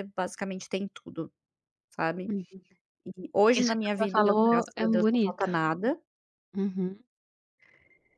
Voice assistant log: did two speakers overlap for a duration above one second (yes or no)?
yes